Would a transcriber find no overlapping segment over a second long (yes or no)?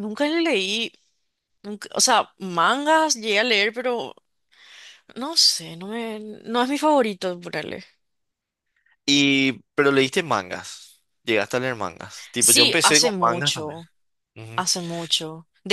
no